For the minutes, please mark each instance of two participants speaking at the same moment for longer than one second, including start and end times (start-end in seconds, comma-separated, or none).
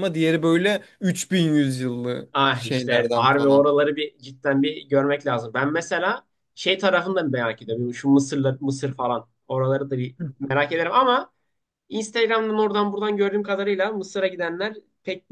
2.3-3.7